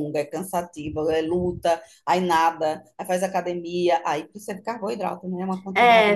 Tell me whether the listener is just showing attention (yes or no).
no